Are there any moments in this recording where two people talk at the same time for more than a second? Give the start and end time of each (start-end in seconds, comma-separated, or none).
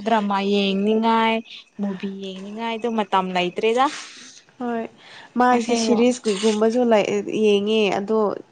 none